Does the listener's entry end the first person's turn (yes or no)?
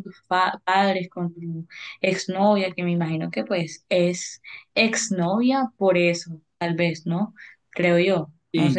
yes